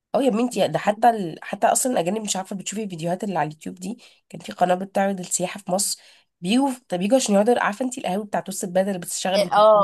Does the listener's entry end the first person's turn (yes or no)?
yes